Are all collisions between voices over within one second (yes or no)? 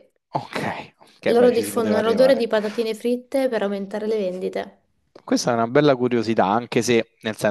no